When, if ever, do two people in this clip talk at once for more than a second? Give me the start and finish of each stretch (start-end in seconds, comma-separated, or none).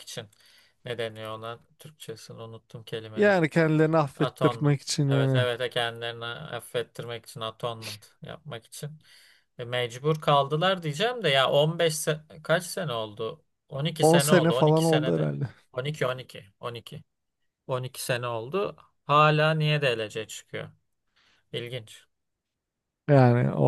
4.2-5.5, 14.0-15.3